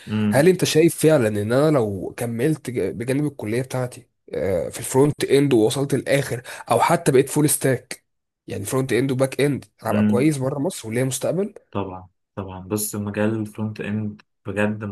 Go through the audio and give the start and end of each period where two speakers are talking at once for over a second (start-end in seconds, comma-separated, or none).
none